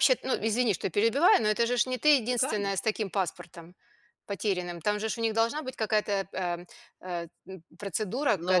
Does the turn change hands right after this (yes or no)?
yes